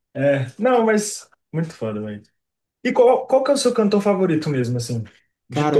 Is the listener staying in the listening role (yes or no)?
no